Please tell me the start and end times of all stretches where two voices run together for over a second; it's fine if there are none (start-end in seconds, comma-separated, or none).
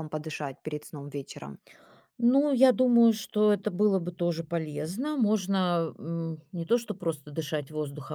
none